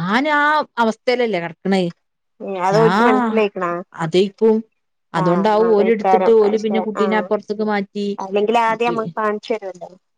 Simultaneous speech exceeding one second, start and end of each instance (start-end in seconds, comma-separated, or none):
5.2-7.2